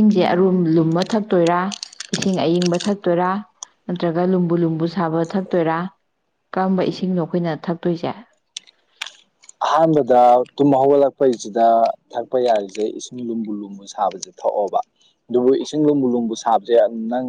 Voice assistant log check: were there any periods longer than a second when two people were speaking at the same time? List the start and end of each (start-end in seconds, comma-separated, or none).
none